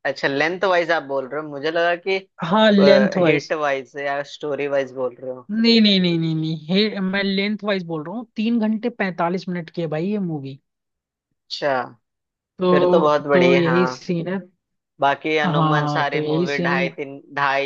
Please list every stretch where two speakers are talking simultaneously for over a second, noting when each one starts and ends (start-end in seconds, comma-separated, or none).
12.7-14.1, 15.4-16.9